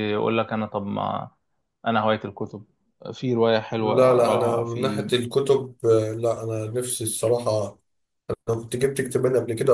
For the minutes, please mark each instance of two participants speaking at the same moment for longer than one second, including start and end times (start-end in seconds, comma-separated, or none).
3.8-5.0